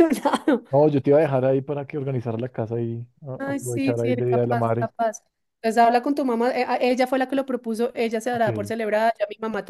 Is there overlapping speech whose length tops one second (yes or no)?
yes